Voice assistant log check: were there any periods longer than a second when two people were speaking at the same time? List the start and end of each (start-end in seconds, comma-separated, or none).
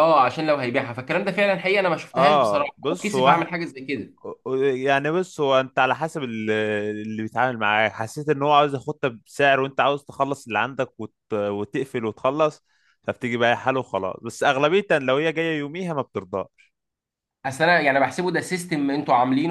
2.1-3.5